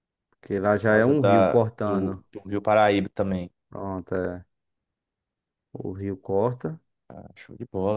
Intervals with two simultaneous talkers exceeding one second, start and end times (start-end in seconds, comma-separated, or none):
0.7-2.2